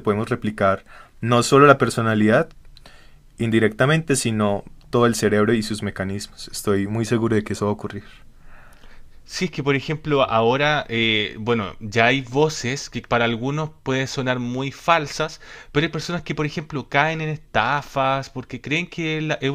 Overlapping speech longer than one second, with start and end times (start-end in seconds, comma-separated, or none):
none